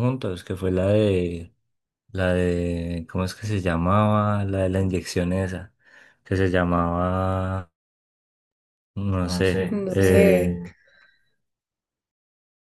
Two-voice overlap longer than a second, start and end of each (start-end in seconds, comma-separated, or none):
9.2-10.6